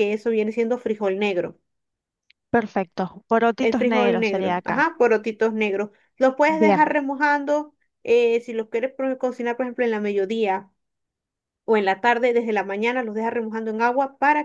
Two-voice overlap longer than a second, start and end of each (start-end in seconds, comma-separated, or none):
3.6-4.9